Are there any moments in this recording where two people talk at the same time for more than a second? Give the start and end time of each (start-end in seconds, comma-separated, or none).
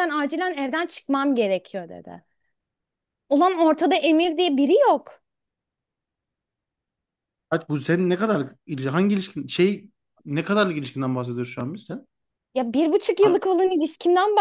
none